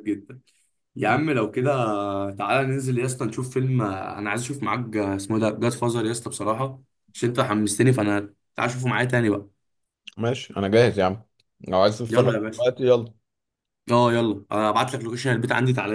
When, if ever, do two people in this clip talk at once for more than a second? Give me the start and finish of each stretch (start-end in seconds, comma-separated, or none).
none